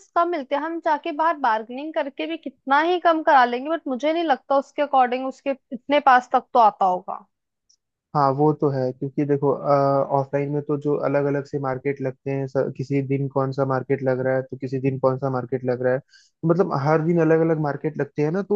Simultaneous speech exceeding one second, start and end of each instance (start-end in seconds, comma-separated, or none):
none